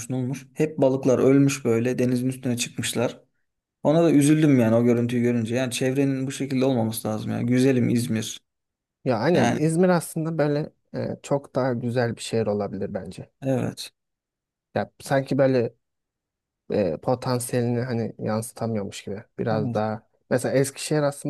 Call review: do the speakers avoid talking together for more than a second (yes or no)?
yes